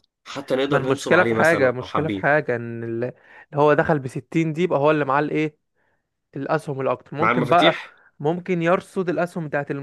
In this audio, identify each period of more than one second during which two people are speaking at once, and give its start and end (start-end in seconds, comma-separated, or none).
0.7-2.3